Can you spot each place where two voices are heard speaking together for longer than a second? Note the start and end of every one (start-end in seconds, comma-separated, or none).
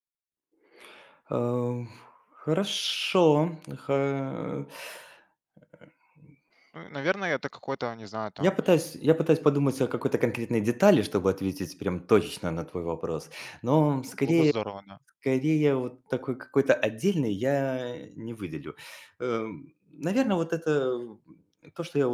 none